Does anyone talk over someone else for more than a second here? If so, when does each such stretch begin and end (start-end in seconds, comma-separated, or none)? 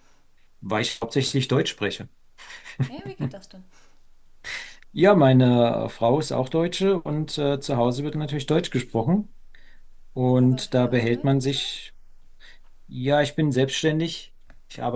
10.4-11.6